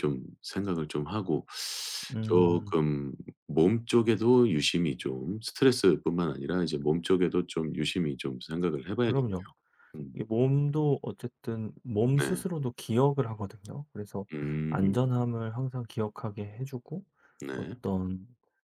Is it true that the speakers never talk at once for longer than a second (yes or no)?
yes